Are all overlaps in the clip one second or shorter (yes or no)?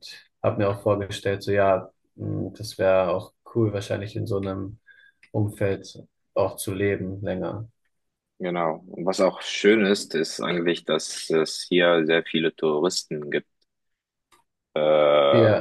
yes